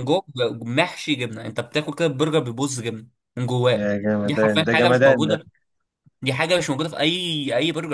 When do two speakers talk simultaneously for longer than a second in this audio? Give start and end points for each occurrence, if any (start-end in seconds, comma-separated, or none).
3.7-5.4